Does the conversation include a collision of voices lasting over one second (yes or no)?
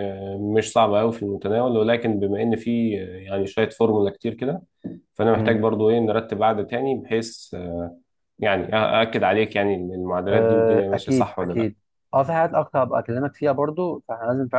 yes